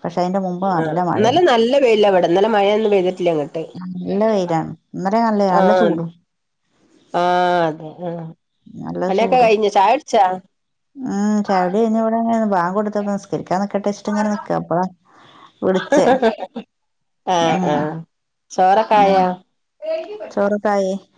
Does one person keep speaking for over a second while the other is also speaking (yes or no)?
no